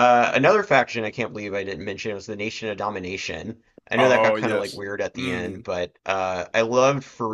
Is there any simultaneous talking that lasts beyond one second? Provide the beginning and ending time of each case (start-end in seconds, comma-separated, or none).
4.0-5.7